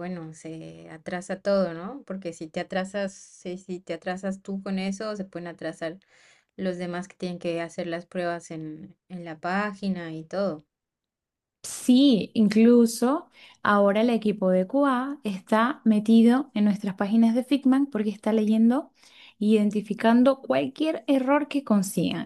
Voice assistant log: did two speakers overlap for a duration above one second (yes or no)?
no